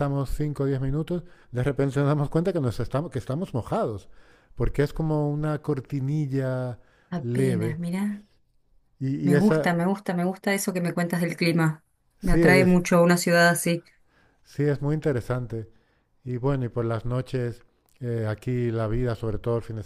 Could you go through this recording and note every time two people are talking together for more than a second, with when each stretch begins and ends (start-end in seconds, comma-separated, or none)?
none